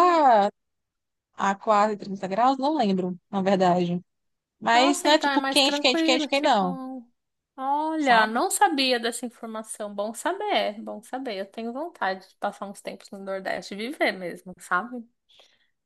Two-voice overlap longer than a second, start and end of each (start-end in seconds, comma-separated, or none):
4.7-6.8